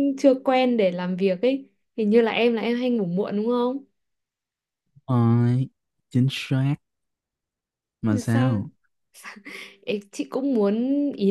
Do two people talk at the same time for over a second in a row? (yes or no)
no